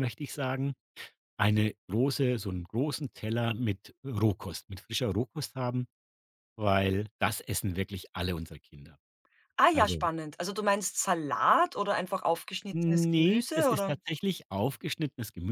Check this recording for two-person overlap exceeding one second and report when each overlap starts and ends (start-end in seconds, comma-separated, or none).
12.7-14.0